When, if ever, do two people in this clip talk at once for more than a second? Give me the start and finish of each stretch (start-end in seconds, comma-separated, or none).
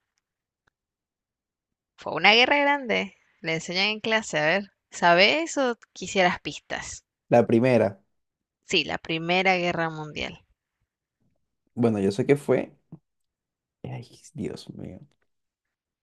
none